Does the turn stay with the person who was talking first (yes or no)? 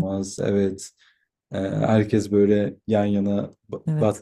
yes